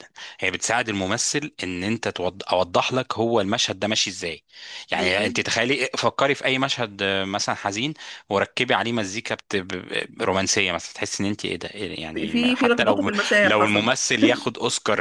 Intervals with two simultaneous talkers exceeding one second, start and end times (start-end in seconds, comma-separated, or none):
12.1-13.9